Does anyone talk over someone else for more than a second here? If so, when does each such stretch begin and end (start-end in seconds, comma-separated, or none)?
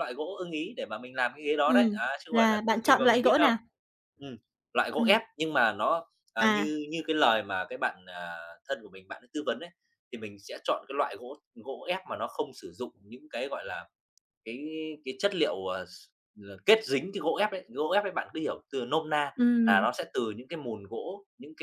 1.6-3.5